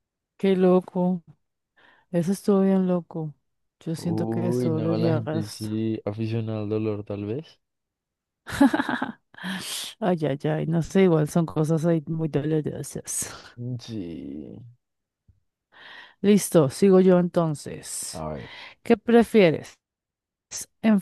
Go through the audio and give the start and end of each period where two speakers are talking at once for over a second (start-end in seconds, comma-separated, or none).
4.0-5.7